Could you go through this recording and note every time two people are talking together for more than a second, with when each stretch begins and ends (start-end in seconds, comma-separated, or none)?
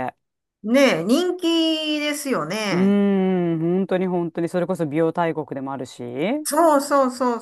none